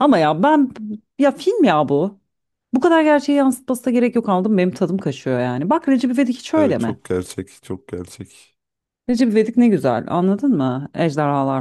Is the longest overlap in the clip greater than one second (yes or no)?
no